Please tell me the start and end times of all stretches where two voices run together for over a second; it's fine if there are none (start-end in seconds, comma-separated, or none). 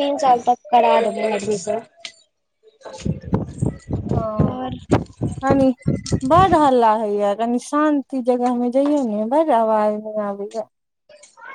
none